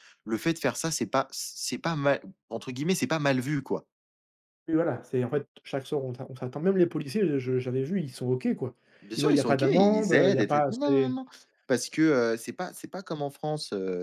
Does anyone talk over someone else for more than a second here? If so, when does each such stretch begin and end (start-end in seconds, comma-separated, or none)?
9.2-11.2